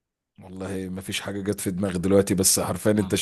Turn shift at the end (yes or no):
no